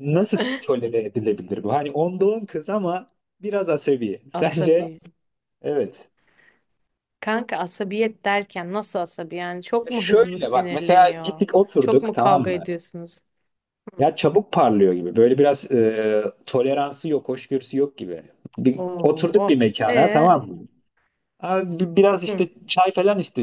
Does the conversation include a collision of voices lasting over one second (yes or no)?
yes